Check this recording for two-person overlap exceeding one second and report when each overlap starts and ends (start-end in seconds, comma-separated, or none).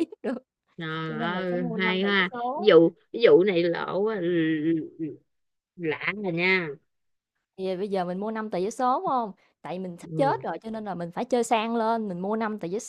1.1-2.7